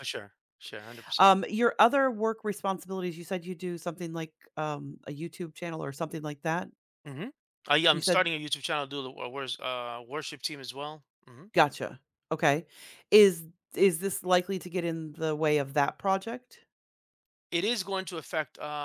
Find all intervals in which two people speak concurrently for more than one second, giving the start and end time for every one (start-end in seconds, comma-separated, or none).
none